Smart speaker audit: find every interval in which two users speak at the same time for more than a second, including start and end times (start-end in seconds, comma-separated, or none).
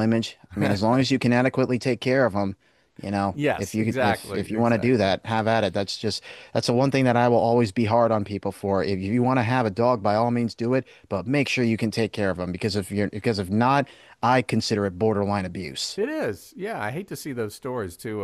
3.3-5.2